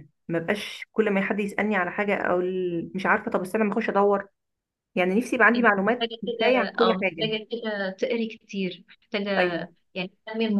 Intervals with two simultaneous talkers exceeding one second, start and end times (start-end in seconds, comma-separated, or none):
5.5-7.3